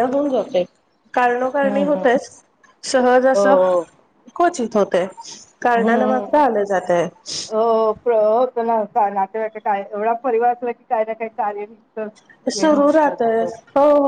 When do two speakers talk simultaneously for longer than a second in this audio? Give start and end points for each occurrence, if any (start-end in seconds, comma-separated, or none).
none